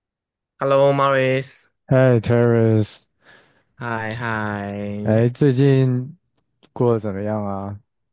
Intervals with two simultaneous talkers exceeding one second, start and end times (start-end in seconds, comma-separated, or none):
none